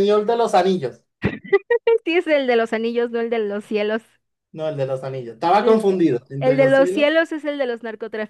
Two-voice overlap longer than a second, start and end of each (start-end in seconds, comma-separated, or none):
5.6-7.1